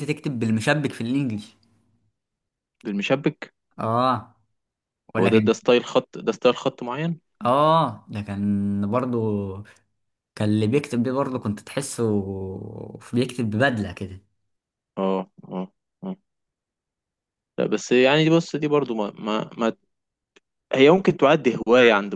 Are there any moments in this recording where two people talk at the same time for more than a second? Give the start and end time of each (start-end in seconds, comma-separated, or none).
none